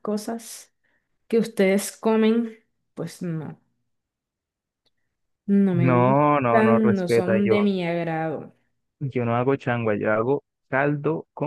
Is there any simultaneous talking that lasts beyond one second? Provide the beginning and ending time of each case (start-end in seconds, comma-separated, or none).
5.7-7.7